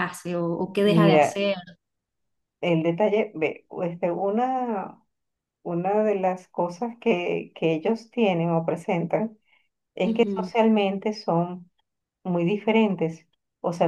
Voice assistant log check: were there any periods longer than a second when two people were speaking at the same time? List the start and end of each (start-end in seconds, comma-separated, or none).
none